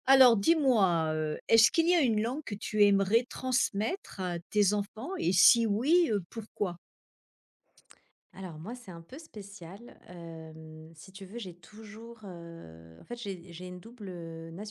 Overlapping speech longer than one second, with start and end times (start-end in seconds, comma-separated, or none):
none